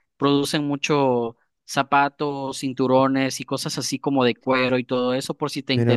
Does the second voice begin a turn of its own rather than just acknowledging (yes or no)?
no